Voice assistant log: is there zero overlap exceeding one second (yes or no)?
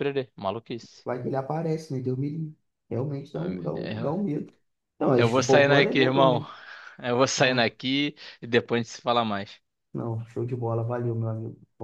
no